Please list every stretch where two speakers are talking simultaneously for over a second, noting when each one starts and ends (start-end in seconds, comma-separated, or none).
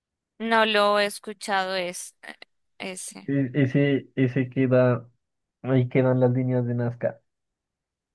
none